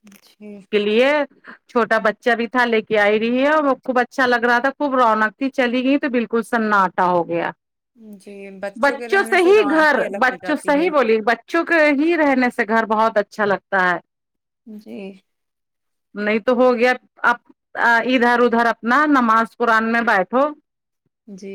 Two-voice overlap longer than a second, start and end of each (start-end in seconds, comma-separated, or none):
9.0-10.9